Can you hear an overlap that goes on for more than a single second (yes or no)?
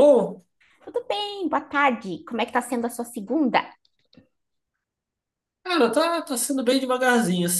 no